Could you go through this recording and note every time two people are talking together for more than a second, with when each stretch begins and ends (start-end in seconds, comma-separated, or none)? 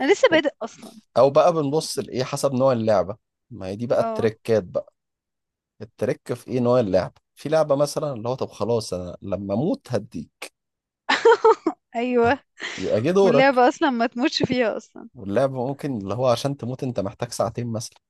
none